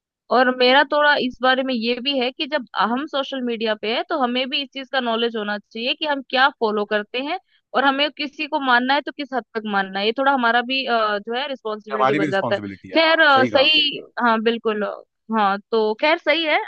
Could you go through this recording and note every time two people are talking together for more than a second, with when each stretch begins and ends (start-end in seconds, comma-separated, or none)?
11.9-14.1